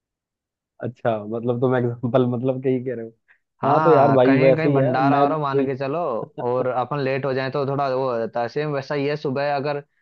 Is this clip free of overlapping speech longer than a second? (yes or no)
no